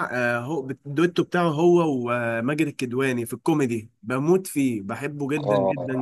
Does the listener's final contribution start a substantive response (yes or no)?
yes